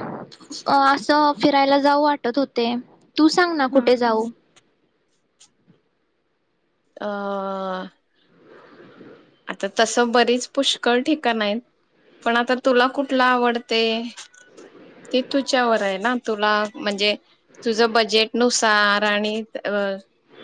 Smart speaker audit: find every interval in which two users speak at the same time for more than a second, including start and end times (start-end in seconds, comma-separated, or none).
none